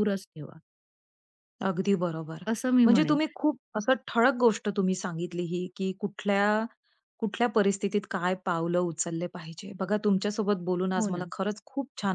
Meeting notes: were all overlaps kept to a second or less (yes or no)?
yes